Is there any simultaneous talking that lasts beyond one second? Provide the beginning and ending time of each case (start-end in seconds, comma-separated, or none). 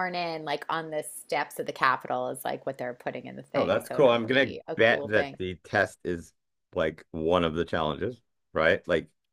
3.5-5.4